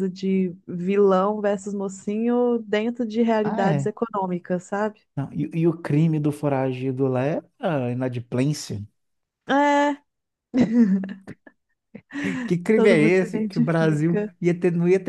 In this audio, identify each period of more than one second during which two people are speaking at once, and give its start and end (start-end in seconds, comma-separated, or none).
12.7-14.3